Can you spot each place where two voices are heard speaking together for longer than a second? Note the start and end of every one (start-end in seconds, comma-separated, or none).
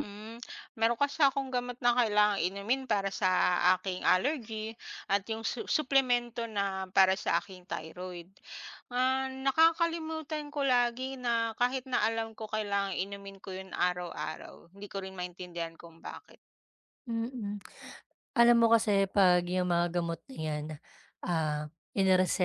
none